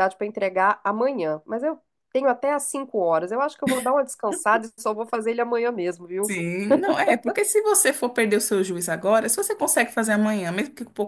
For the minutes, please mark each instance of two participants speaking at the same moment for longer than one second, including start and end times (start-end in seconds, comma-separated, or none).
none